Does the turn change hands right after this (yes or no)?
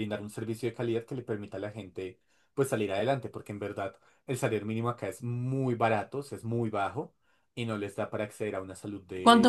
yes